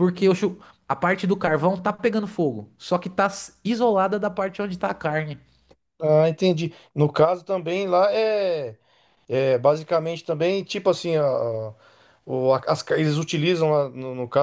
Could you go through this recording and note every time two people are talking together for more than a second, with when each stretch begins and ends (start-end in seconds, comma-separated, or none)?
none